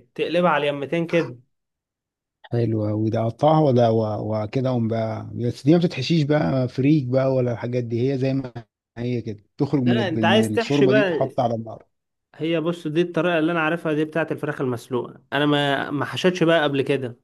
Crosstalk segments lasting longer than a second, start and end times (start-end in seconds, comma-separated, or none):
9.8-11.3